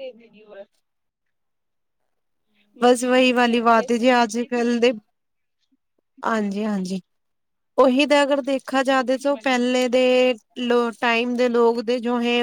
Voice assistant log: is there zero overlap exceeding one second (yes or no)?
no